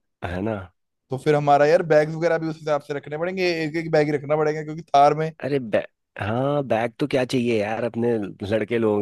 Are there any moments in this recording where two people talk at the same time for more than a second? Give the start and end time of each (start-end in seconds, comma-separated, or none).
none